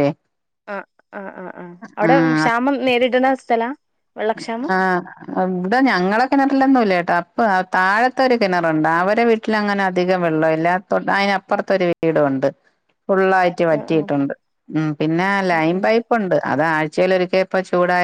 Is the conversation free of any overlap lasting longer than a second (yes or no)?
yes